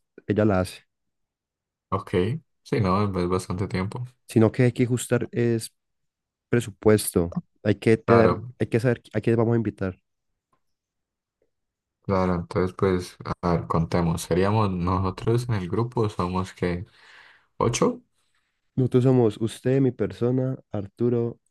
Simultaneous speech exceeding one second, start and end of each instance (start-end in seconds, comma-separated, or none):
none